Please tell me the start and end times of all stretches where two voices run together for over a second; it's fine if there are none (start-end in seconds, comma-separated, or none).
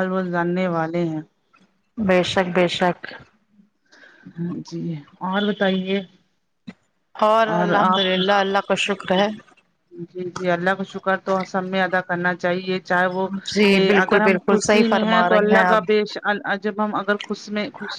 14.0-16.0